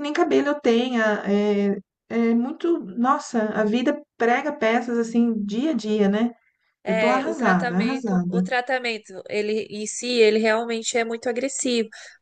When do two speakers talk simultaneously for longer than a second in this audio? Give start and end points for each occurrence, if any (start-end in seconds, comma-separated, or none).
6.9-8.4